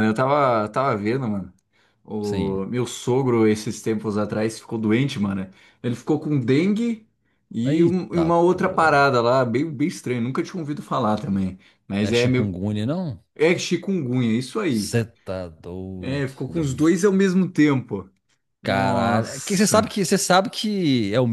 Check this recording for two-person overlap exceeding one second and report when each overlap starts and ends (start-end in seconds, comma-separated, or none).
7.7-9.2, 18.6-19.9